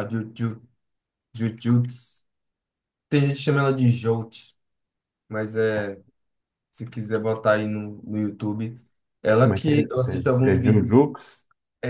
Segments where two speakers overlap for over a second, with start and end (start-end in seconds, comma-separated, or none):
9.4-11.0